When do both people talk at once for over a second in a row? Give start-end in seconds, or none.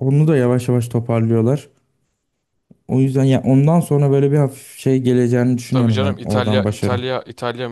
5.7-7.0